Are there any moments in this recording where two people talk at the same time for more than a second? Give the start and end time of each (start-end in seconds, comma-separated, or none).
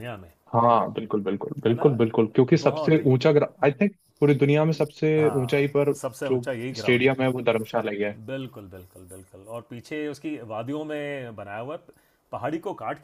5.2-7.2